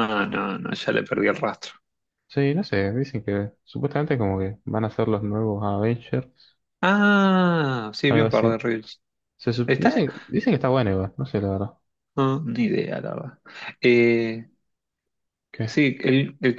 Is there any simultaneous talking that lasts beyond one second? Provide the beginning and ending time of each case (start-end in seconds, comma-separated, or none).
none